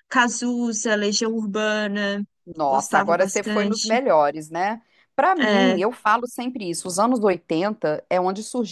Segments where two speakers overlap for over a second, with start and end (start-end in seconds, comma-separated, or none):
2.6-4.0